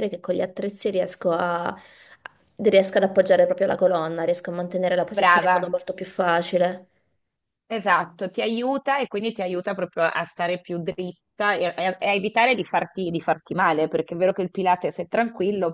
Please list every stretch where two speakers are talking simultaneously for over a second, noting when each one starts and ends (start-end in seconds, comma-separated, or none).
none